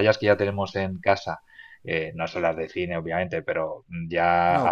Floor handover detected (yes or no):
no